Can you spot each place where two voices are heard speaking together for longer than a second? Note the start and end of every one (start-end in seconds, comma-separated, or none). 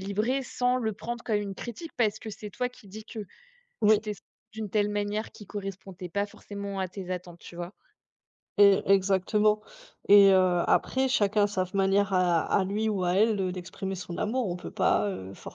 none